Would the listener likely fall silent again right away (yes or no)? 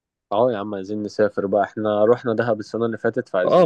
no